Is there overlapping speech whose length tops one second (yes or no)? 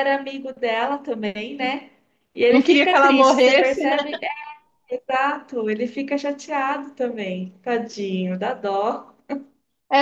yes